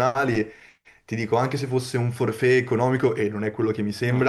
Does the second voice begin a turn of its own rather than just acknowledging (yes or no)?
no